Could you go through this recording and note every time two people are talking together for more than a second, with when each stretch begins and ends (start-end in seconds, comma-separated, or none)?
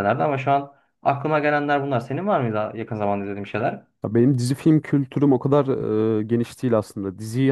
none